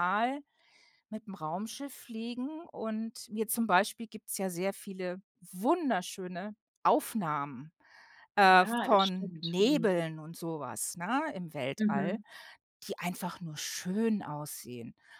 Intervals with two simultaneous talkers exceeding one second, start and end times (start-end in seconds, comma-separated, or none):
8.5-10.0